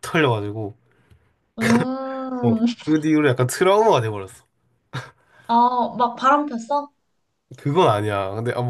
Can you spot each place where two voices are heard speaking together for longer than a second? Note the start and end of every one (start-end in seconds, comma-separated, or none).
none